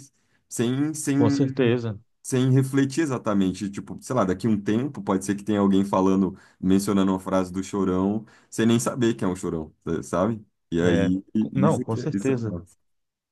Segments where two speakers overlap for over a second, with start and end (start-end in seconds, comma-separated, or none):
10.8-12.6